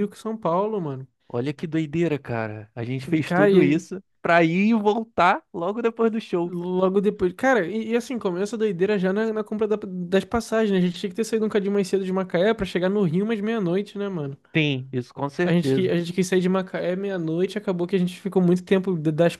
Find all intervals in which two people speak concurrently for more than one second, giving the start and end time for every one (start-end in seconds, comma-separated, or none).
none